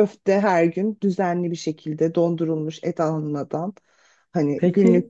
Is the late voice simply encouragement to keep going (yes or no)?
no